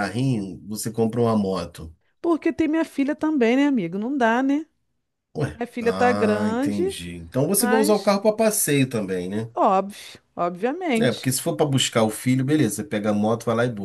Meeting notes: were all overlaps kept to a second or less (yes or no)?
no